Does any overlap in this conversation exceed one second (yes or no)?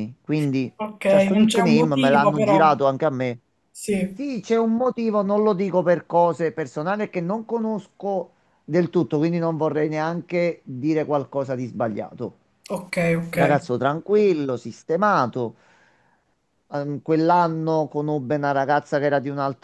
yes